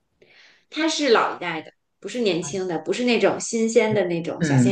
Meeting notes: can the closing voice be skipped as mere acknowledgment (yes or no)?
no